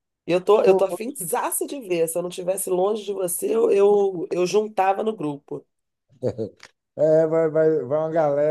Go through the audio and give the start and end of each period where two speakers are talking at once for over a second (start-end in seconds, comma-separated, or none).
none